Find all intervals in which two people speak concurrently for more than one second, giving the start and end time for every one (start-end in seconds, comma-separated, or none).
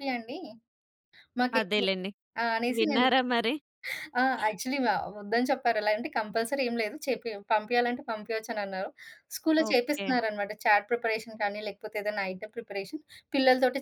none